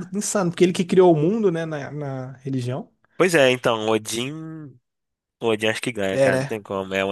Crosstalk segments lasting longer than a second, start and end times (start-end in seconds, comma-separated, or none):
none